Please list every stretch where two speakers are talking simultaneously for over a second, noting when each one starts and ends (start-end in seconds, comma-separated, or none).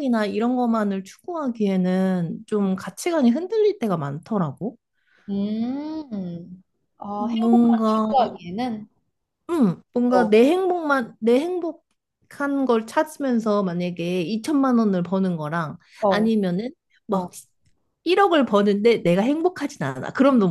7.2-8.4